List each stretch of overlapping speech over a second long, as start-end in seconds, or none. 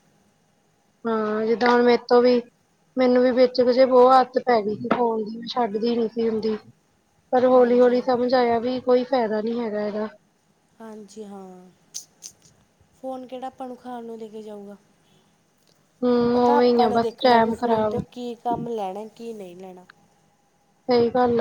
16.3-18.0